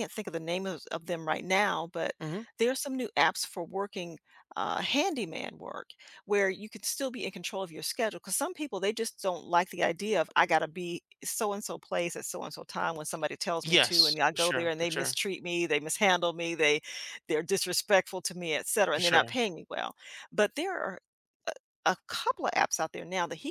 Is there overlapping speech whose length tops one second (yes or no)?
yes